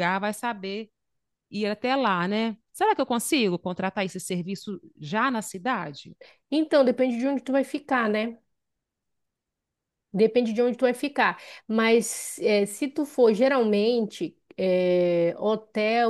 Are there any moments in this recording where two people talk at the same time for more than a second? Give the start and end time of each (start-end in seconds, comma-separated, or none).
none